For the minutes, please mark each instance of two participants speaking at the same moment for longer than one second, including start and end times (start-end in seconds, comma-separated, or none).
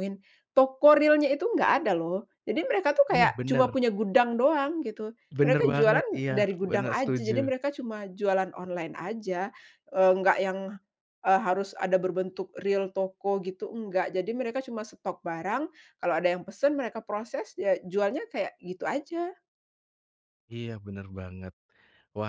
5.4-7.3